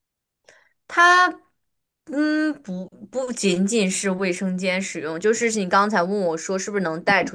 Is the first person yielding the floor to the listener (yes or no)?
no